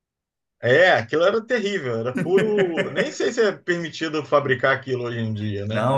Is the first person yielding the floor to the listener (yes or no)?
yes